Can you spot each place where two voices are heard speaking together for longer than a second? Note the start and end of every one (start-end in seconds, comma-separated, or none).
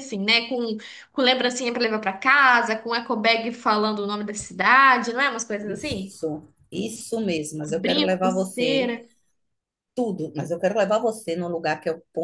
7.7-8.9